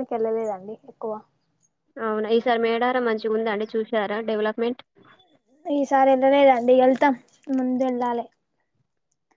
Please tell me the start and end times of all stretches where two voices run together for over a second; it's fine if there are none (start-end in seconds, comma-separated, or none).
none